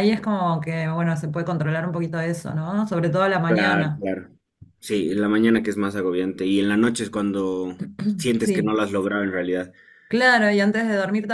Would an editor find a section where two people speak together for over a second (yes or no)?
no